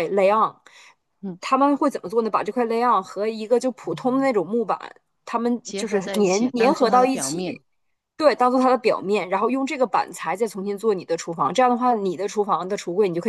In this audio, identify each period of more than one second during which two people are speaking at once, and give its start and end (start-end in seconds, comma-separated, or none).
5.6-7.6